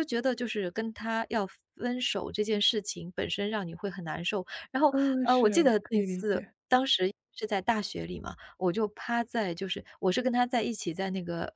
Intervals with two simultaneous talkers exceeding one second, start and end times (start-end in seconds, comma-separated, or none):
4.9-6.5